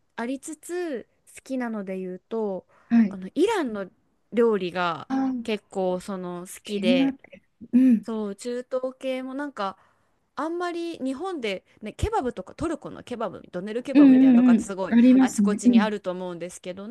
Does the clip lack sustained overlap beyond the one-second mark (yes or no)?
no